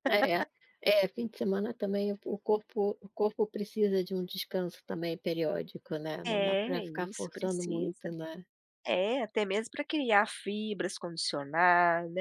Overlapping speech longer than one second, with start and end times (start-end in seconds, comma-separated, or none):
6.2-8.1